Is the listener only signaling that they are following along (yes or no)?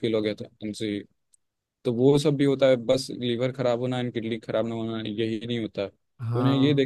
yes